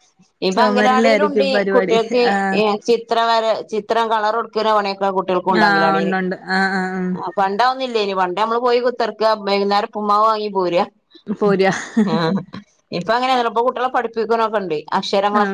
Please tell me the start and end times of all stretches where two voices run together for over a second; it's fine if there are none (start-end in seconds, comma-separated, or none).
0.5-1.9